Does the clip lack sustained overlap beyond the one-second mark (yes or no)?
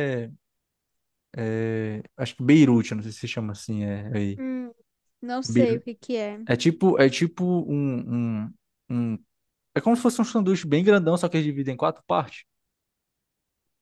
yes